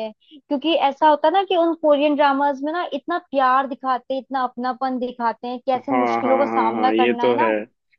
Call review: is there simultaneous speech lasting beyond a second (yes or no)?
yes